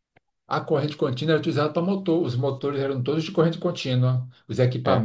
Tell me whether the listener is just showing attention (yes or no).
yes